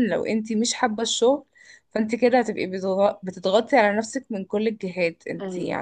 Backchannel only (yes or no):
yes